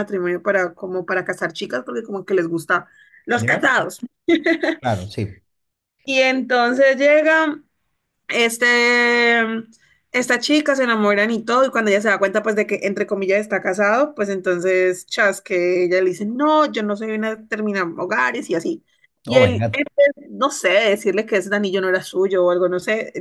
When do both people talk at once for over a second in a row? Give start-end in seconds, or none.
none